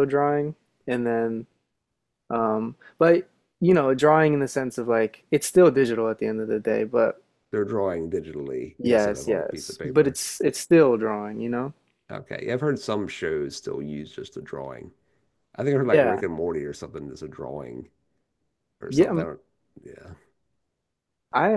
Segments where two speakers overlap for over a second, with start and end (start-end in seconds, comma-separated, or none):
8.8-10.2